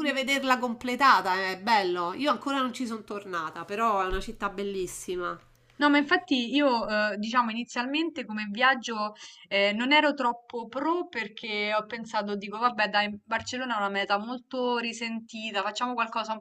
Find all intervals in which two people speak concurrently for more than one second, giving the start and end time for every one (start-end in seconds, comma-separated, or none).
none